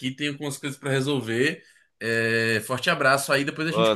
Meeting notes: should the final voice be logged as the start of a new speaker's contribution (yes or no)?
yes